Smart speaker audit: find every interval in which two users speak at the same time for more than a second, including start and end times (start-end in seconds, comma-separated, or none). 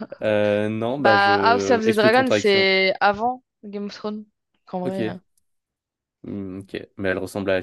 1.0-2.7